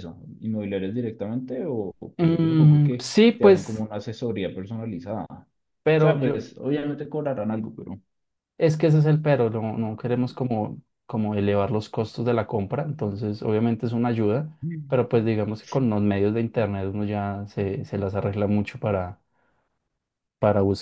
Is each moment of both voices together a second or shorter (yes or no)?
no